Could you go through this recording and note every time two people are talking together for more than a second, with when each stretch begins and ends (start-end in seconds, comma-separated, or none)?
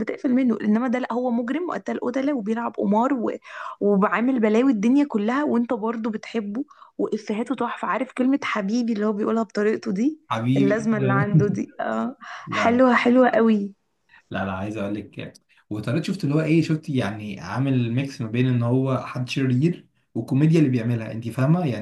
none